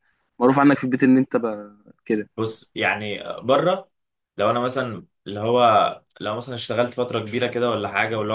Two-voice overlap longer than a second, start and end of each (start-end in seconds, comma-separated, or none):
none